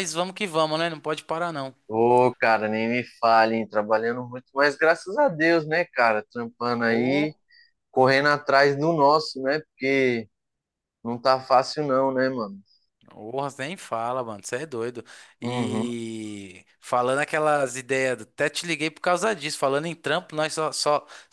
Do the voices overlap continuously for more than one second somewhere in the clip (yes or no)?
no